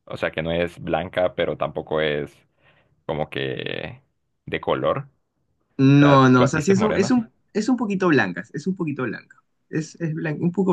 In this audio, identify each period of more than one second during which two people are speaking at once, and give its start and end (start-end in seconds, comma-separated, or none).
6.0-7.3